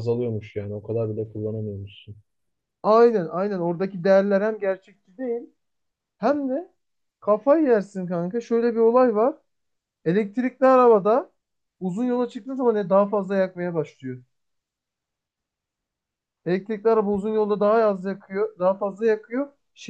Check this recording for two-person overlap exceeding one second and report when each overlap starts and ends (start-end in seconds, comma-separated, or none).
none